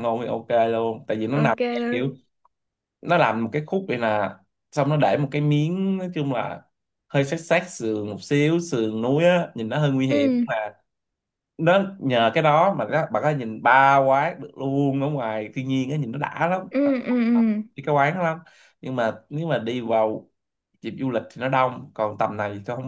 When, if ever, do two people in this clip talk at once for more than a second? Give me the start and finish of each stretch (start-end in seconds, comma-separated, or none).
none